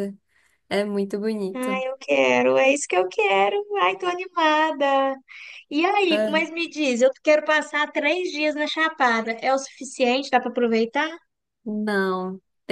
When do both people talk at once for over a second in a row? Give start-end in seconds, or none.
none